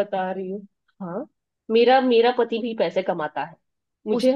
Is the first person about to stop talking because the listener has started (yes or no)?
yes